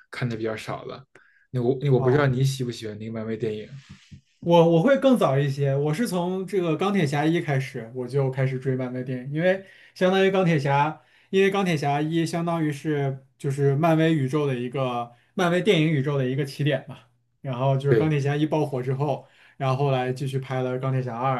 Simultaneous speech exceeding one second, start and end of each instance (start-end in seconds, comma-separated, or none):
none